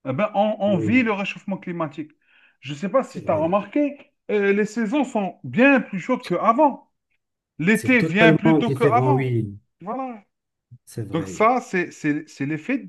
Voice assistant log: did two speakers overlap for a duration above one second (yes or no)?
yes